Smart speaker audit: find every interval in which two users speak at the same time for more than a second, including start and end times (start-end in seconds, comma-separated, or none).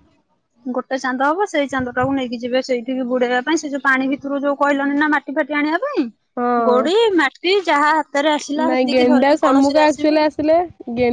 8.7-10.2